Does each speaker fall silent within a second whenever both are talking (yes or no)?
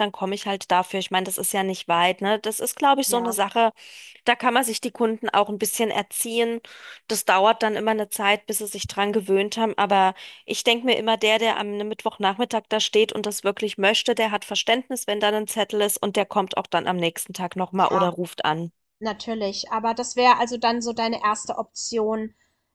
yes